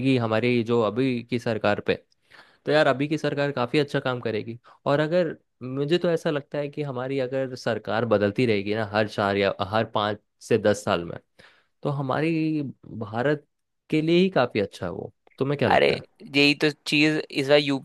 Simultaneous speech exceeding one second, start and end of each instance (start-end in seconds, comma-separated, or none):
none